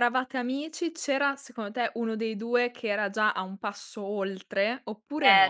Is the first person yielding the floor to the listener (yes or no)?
yes